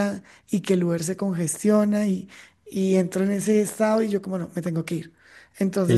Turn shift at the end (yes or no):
yes